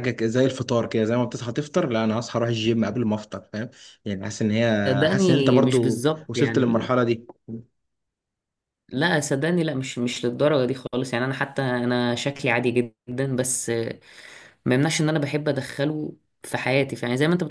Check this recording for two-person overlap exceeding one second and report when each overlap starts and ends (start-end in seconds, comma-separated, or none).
4.9-6.9